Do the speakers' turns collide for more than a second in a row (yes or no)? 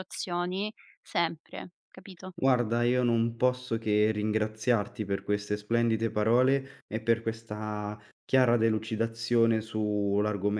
no